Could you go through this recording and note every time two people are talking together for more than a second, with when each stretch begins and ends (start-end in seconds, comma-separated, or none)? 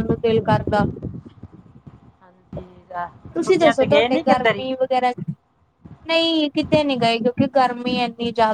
3.4-4.7